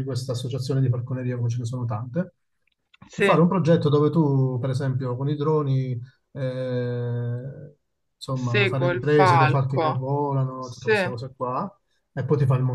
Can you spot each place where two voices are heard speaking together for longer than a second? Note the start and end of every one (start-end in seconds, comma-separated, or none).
8.3-9.9